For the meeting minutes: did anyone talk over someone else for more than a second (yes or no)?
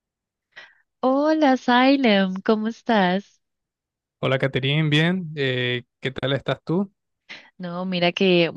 no